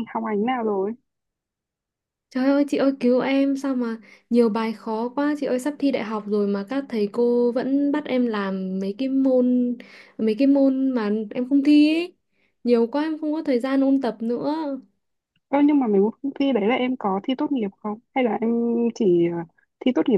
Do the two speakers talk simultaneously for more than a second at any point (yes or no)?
no